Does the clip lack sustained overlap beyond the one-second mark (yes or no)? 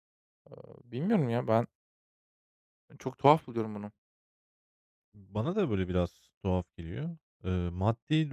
yes